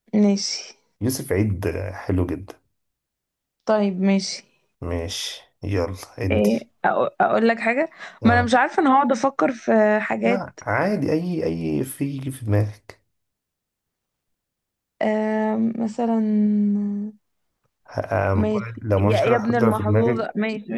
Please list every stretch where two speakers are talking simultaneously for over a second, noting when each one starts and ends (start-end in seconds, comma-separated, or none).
18.3-20.3